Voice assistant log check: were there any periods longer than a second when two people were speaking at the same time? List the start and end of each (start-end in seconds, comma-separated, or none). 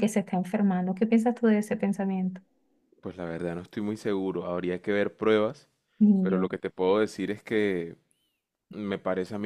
none